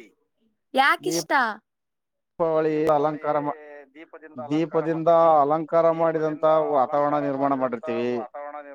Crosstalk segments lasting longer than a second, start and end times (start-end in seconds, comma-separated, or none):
5.9-8.1